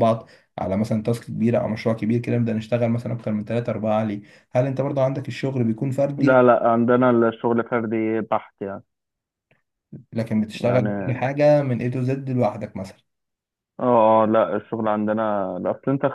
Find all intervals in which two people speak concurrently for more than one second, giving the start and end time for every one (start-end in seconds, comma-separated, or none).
none